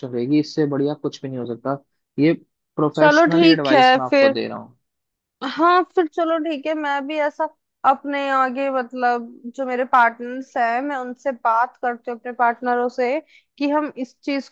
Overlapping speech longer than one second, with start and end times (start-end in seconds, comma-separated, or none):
3.0-4.3